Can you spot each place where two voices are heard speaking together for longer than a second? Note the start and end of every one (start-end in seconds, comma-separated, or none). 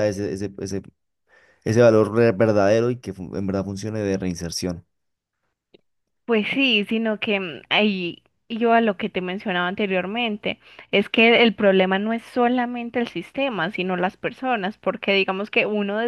none